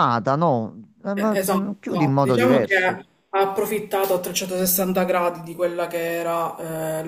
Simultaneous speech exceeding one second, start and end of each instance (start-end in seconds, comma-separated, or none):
1.1-3.0